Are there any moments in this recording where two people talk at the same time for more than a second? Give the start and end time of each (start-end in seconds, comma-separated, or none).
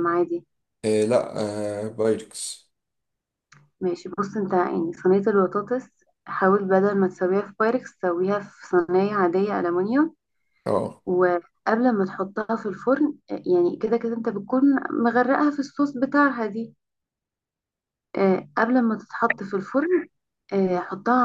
none